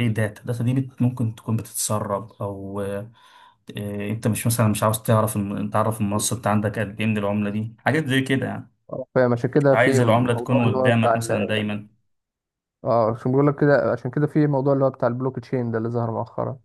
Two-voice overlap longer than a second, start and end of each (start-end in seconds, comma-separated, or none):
9.7-11.6